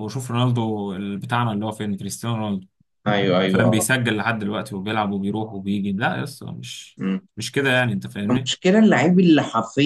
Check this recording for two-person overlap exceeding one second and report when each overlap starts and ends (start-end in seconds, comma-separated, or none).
none